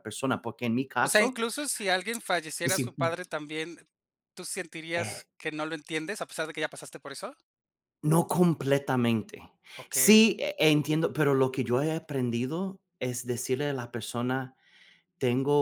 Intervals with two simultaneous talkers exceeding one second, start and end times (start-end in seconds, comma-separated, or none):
none